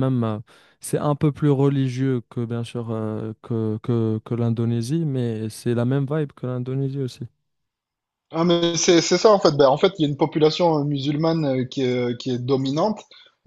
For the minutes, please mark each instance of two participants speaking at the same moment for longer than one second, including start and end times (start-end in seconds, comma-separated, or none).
none